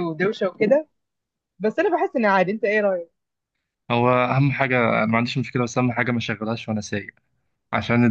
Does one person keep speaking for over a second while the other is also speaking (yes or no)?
no